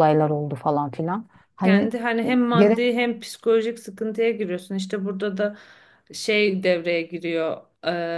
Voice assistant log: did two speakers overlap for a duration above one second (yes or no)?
no